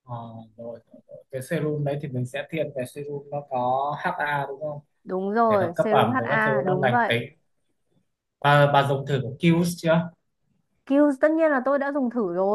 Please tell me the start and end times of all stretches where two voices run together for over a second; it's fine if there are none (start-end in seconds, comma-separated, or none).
5.5-7.1